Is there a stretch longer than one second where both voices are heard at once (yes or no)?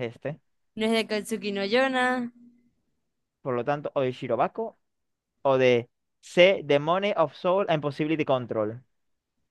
no